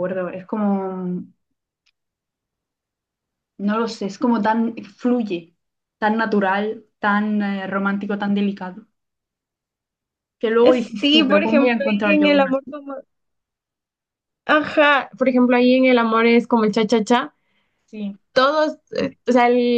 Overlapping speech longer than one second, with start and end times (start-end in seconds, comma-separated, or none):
10.6-12.8